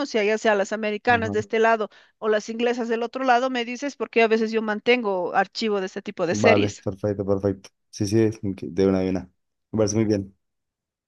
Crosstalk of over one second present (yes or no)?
no